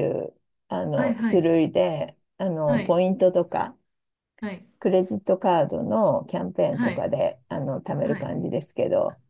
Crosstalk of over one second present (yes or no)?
no